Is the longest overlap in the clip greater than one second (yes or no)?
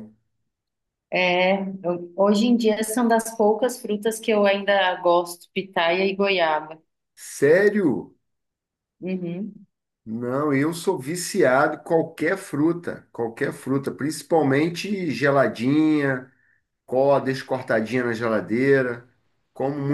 no